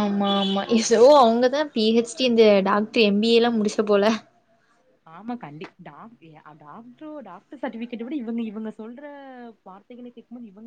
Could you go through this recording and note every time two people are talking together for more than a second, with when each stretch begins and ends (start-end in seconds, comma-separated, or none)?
none